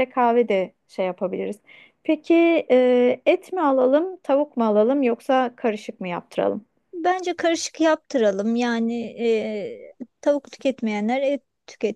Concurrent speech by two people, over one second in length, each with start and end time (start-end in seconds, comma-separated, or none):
none